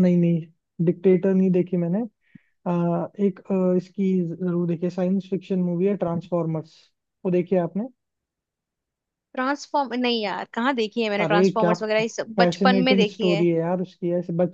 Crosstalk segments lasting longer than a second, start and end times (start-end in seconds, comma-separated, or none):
11.2-13.4